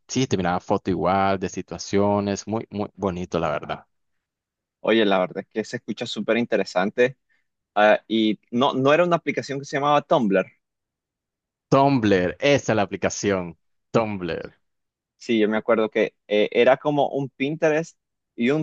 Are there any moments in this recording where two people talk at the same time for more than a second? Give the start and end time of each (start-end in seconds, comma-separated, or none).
none